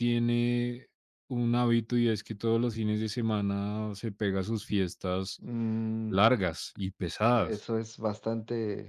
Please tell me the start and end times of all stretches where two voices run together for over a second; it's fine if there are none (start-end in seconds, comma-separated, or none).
none